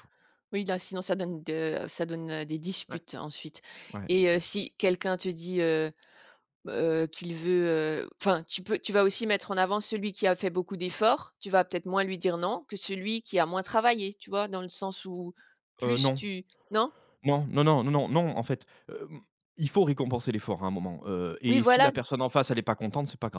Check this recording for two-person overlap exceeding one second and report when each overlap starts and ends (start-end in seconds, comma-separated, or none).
none